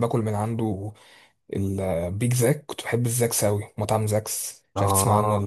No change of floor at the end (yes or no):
no